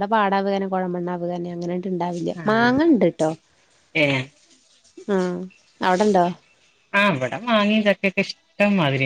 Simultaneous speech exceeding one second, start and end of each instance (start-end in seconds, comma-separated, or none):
none